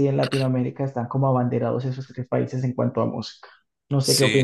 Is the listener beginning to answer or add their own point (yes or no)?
yes